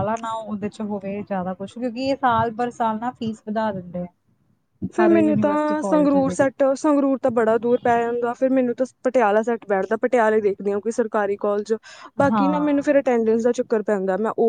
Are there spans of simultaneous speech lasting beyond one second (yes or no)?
yes